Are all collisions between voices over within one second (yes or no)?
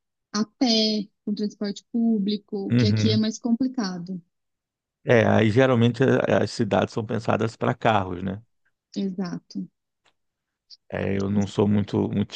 yes